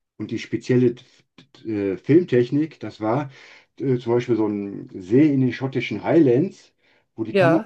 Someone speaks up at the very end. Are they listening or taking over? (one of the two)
listening